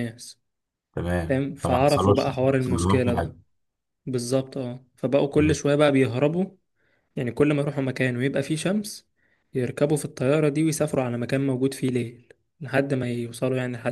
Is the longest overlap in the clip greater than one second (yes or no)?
yes